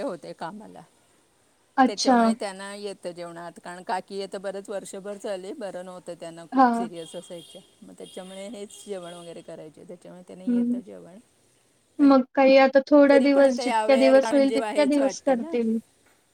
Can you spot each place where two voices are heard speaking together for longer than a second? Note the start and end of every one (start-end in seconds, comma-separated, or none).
13.1-15.5